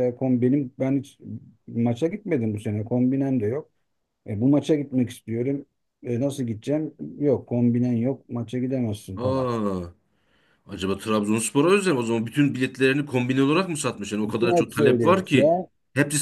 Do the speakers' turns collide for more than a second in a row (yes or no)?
yes